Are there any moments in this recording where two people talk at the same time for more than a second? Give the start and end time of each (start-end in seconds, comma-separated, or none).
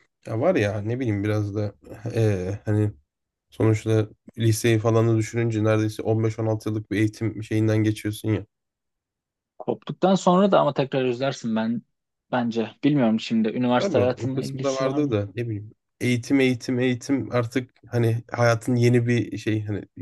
13.8-15.2